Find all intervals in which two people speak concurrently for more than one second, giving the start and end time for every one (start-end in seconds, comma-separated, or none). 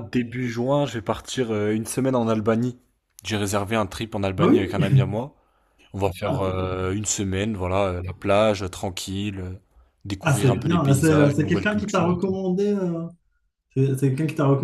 10.2-12.4